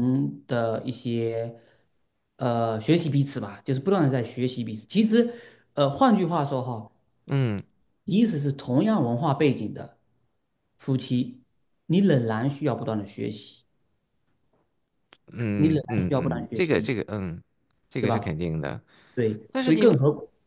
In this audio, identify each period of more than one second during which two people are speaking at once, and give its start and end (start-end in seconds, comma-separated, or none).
15.6-17.0